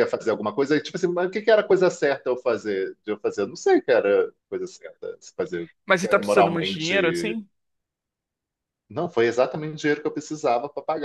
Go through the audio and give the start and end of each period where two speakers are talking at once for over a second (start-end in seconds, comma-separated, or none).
5.8-7.4